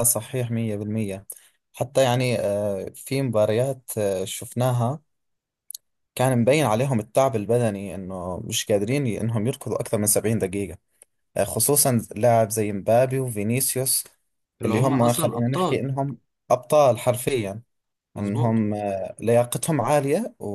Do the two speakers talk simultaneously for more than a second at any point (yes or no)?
yes